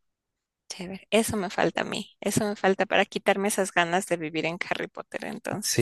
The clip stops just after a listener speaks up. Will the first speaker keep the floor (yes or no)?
no